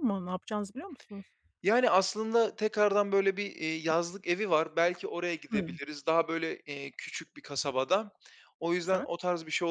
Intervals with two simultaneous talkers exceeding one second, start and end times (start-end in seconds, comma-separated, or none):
none